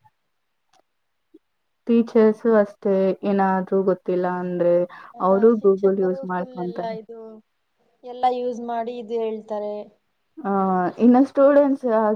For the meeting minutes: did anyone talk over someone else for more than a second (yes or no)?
yes